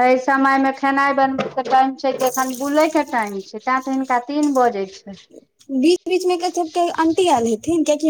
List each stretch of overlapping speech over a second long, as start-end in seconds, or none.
none